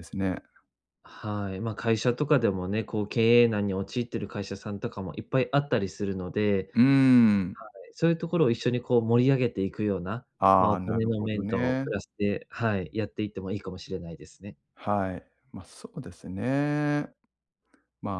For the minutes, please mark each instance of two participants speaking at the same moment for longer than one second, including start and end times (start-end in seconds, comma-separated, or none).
10.4-11.9